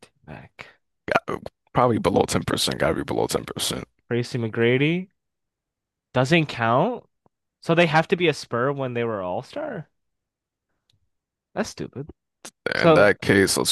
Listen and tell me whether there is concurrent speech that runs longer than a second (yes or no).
no